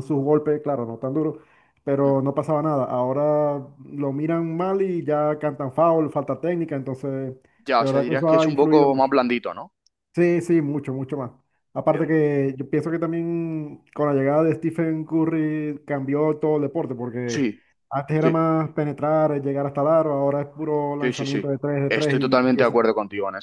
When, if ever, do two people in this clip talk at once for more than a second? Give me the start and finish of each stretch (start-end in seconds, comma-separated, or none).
7.8-9.1, 21.0-22.8